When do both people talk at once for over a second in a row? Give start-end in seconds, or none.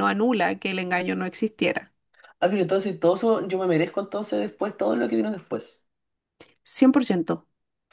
none